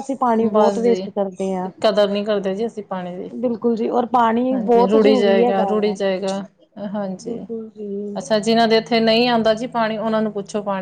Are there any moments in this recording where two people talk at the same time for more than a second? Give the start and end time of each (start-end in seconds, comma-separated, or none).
4.5-6.0